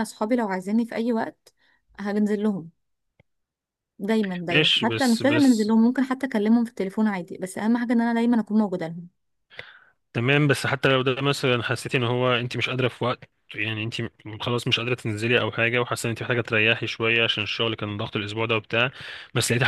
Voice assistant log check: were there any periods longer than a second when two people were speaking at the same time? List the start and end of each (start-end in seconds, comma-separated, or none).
4.5-5.7